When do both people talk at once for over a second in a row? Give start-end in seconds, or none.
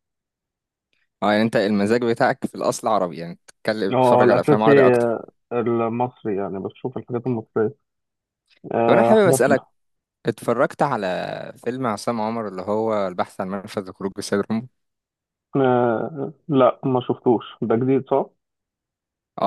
3.9-5.2